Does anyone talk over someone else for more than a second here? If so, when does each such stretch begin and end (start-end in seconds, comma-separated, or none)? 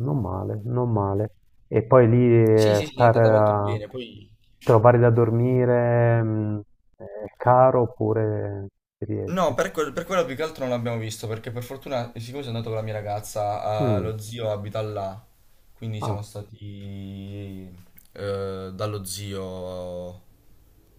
2.5-3.8